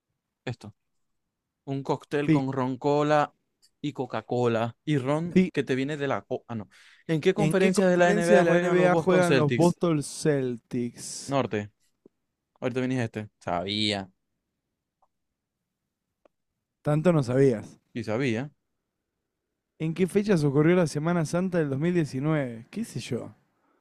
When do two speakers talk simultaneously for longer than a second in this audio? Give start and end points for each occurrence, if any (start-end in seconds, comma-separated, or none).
7.3-9.8